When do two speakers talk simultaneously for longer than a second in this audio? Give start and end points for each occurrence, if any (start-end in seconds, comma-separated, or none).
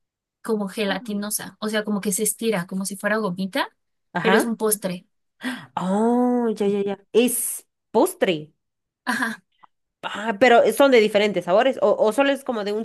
none